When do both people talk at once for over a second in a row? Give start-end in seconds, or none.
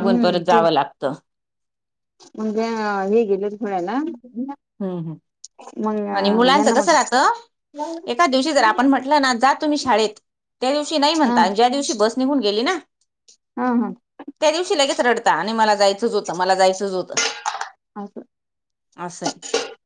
none